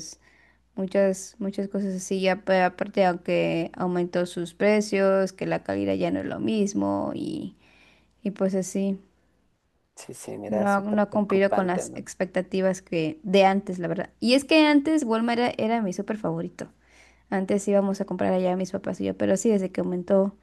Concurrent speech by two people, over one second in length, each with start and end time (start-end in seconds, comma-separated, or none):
10.5-12.1